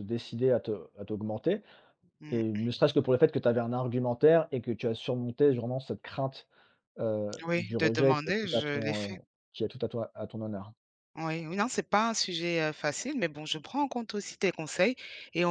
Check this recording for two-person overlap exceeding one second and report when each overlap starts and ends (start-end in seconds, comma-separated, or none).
7.5-9.2